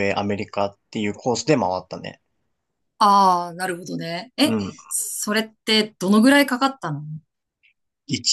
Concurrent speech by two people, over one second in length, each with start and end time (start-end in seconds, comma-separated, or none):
none